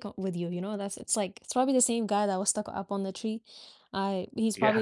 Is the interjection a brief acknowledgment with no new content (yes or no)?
yes